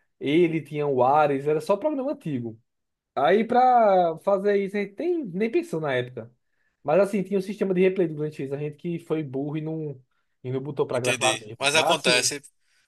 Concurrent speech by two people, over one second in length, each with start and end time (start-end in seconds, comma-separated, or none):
10.9-12.3